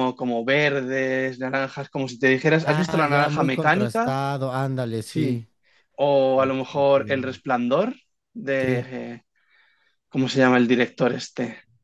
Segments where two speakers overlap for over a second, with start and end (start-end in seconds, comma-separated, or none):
2.6-4.2